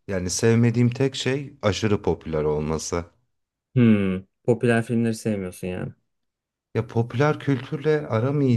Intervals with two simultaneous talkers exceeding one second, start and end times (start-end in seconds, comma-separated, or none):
none